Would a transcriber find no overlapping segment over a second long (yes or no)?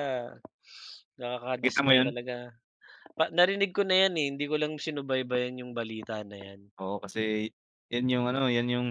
yes